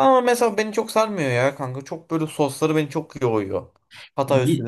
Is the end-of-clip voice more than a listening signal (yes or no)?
no